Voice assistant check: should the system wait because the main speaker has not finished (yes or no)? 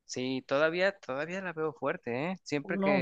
yes